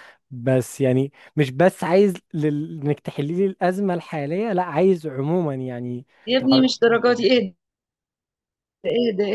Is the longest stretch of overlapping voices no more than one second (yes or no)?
no